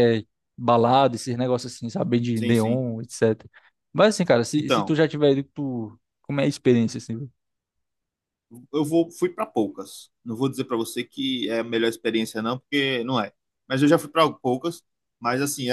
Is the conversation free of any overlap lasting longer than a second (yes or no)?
yes